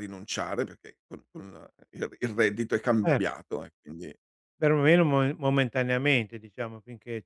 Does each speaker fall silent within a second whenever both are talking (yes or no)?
yes